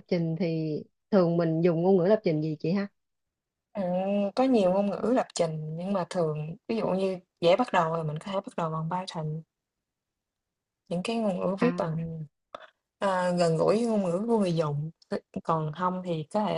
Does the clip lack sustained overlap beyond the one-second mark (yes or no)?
yes